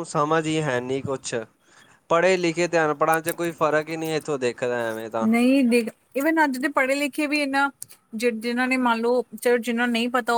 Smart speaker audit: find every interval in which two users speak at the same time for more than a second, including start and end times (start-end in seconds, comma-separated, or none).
none